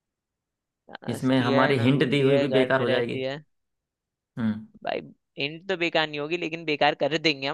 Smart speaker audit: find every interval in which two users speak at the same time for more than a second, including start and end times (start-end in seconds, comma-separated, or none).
1.1-3.2